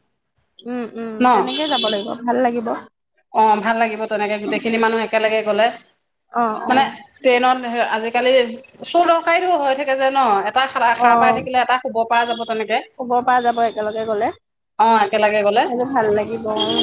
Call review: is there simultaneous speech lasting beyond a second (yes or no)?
no